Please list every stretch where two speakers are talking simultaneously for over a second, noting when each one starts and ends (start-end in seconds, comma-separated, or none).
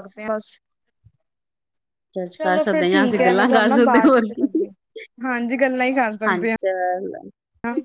2.4-4.5